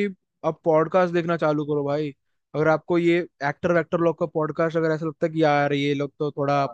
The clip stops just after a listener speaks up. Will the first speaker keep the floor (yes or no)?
yes